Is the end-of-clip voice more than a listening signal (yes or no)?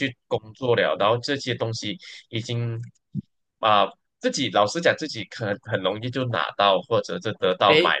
yes